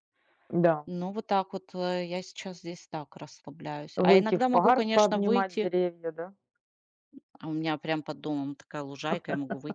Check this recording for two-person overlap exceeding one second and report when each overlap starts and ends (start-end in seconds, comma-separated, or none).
4.0-5.7